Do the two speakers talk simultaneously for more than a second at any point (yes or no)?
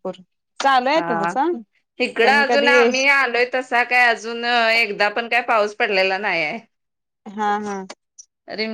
no